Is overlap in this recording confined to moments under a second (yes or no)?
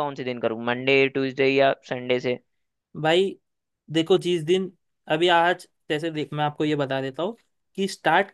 yes